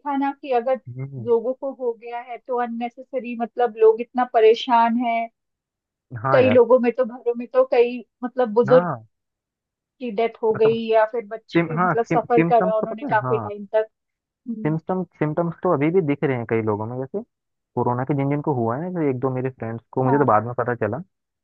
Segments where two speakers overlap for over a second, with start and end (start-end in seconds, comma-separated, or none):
11.5-13.5